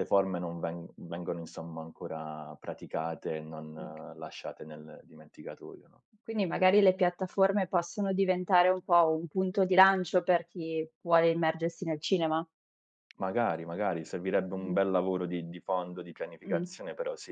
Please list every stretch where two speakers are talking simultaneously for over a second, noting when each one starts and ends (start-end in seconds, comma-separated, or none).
none